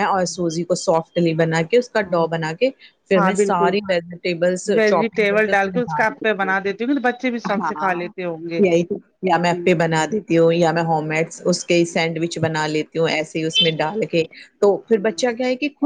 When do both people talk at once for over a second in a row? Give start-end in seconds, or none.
4.8-6.5